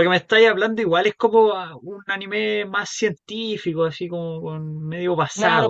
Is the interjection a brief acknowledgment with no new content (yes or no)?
no